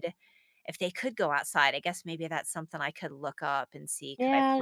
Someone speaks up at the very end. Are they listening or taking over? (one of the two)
taking over